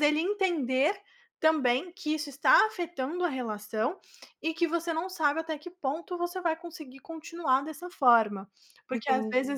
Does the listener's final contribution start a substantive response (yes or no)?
no